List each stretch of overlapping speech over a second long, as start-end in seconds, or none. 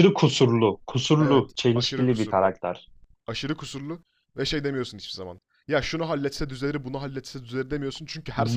1.2-2.5